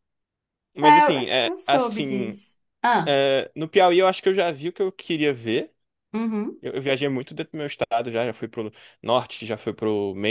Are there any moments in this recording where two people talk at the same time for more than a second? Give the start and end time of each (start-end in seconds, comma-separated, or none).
0.8-2.4